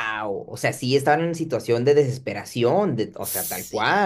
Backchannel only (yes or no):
no